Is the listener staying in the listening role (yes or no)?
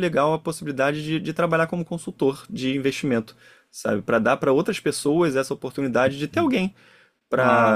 yes